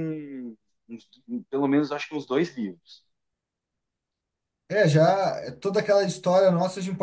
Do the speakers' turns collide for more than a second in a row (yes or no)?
no